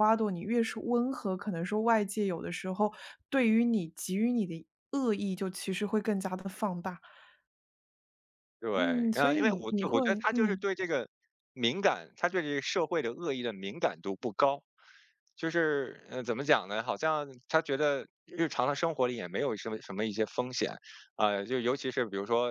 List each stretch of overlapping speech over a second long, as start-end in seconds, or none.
8.7-10.6